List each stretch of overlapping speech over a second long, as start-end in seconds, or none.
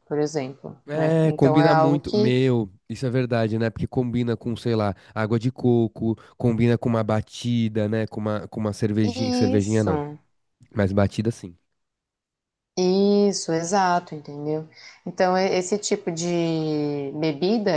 0.9-2.4